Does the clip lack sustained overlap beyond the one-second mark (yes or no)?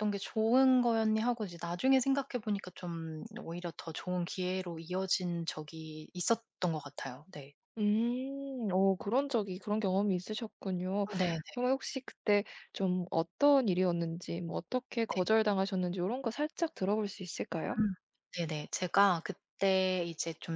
yes